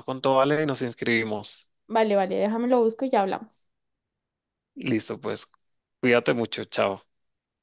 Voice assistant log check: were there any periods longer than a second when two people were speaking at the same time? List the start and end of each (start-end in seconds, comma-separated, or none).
none